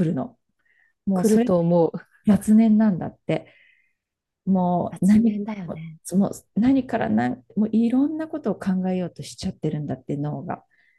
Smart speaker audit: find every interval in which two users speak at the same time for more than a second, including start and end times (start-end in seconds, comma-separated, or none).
none